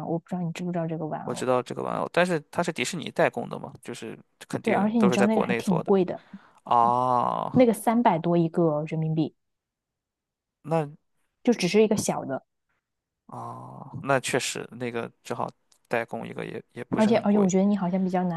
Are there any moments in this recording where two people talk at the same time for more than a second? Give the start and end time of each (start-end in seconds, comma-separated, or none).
4.6-5.9